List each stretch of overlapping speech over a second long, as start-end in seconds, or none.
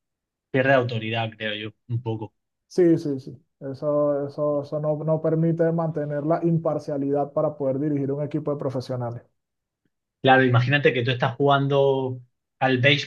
none